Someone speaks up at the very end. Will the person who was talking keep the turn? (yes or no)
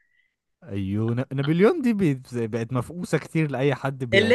no